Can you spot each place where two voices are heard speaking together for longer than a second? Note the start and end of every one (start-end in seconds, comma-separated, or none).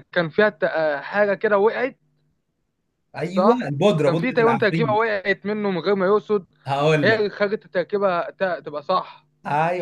3.3-5.0